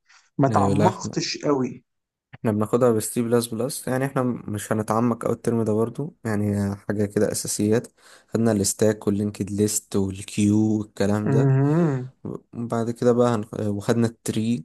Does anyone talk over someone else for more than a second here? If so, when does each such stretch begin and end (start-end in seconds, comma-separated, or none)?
none